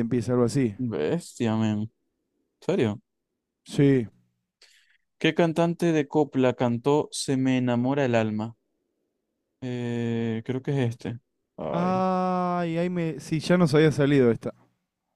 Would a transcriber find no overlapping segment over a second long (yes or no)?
yes